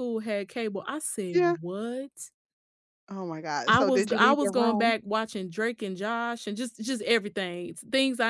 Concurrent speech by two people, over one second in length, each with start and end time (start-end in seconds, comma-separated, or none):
3.7-4.9